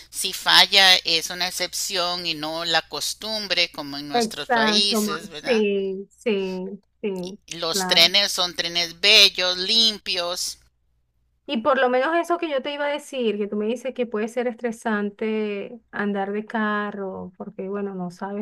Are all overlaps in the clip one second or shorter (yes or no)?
no